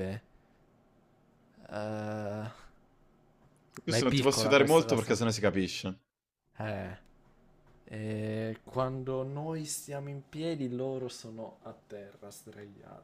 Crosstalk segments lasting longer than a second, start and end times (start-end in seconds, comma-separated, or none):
3.9-5.2